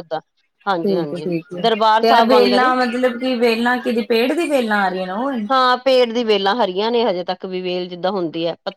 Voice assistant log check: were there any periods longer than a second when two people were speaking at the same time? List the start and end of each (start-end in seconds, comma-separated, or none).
0.8-2.7